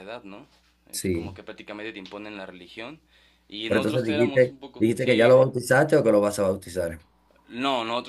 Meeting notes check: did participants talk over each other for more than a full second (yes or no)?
yes